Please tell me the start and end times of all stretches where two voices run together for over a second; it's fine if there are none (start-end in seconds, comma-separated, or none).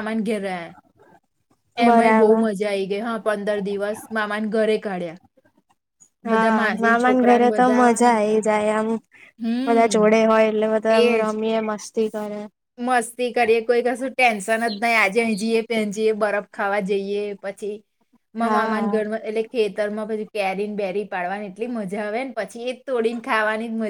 6.3-8.4